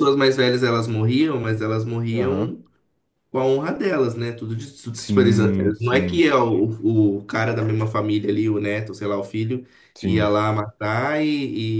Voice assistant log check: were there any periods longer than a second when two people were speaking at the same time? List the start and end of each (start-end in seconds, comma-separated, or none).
4.9-6.2